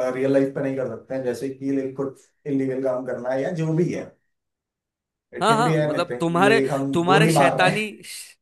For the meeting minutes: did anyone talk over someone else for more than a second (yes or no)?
yes